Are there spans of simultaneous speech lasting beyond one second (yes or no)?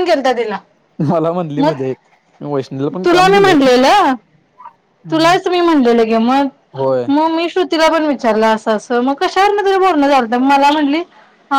no